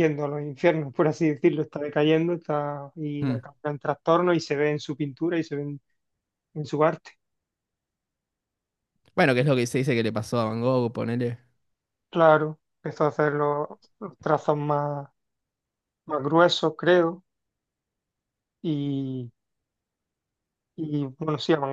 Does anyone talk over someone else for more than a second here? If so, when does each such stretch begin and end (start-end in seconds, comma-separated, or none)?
none